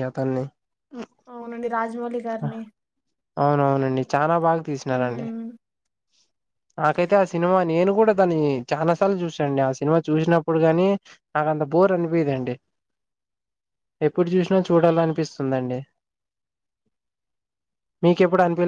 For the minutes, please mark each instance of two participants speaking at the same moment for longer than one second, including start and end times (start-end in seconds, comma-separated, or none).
none